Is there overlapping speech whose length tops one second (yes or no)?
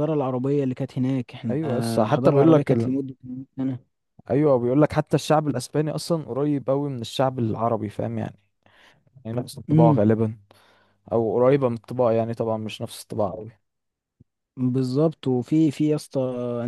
yes